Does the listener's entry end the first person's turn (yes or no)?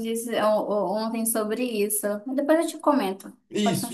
yes